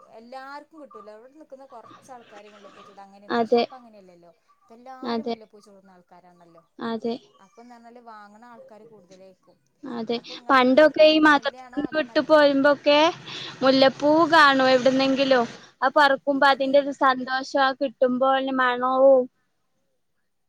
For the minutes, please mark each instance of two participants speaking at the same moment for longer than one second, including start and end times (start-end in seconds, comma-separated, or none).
none